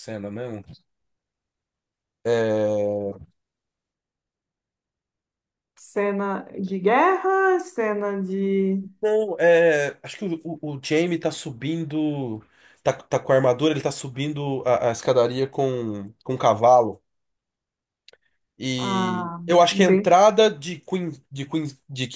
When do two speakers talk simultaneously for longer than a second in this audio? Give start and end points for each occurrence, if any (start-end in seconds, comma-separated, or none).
18.8-20.2